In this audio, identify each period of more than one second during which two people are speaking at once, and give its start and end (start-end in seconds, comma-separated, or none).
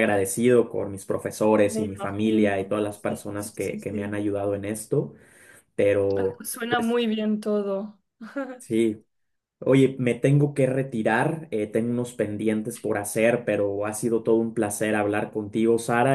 1.6-4.2